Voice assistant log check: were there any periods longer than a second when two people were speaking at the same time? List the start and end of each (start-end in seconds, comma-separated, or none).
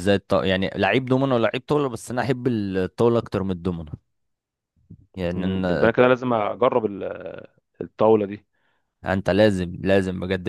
none